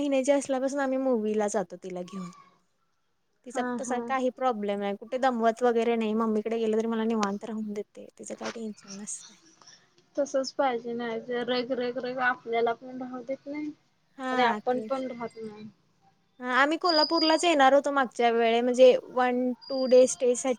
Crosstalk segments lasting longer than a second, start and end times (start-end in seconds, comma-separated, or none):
none